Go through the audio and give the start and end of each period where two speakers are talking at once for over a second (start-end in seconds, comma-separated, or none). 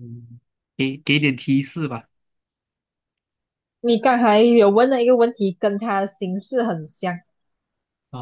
none